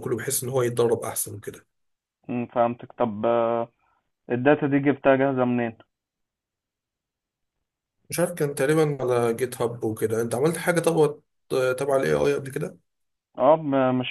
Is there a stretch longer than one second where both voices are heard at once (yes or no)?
no